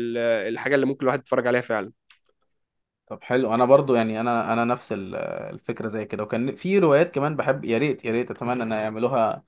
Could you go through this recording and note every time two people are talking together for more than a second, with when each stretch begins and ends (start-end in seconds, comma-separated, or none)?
none